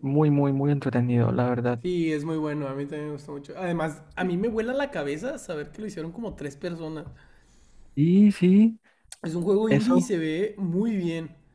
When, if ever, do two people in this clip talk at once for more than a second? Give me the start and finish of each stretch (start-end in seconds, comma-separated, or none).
none